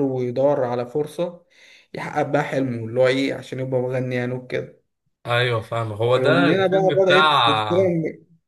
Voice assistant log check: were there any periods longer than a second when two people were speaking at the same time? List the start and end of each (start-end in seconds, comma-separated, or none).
6.2-7.6